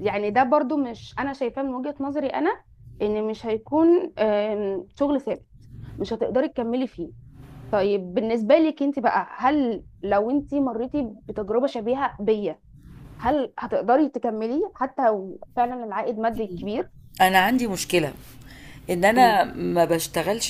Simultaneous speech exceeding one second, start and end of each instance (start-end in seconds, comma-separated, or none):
none